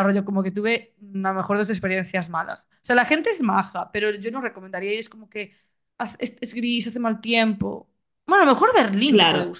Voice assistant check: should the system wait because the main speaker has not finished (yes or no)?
no